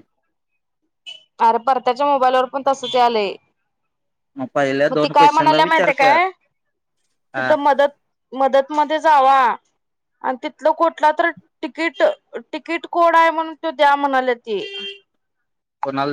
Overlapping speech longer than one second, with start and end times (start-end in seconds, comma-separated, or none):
4.9-6.2